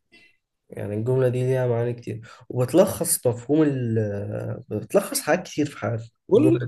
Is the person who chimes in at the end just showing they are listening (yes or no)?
no